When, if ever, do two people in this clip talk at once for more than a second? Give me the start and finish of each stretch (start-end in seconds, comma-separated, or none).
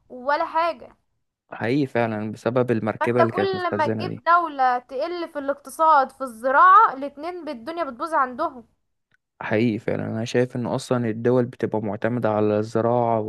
3.0-4.2